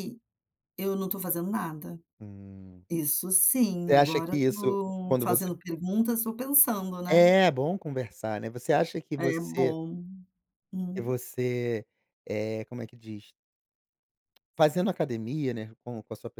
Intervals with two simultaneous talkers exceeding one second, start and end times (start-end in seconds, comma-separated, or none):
3.9-5.5